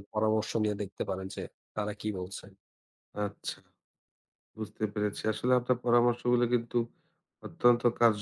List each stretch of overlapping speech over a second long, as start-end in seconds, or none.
none